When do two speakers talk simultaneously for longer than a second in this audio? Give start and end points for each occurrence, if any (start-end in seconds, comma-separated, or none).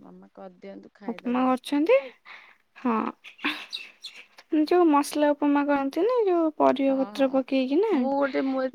none